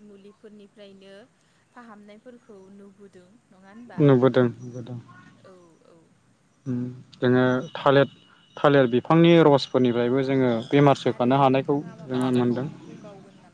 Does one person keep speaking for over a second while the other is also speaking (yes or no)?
yes